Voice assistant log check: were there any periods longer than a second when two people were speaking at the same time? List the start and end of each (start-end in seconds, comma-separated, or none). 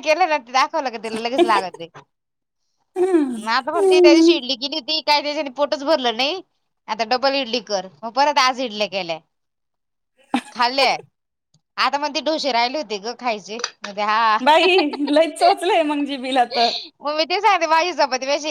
none